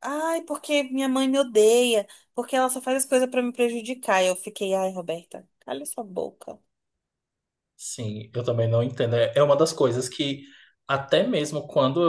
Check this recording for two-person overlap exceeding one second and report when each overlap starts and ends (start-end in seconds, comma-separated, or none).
none